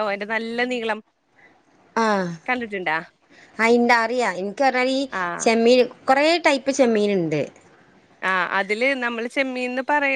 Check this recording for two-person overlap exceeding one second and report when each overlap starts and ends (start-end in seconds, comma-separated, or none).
none